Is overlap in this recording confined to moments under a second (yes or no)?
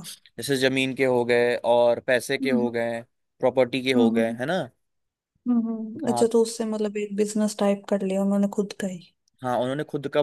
yes